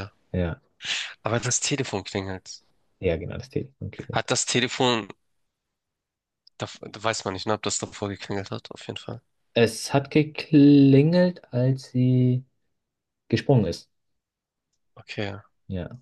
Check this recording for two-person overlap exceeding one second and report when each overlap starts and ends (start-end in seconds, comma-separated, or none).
none